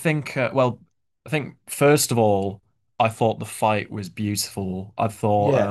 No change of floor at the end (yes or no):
yes